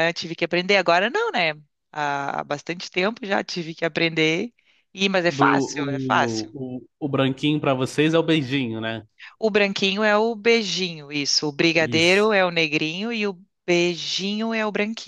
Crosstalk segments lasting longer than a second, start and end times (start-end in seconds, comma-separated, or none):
5.3-6.5